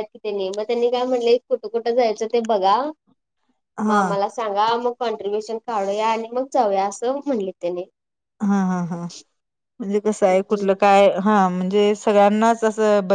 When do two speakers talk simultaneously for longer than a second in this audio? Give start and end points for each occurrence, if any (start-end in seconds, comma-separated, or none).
none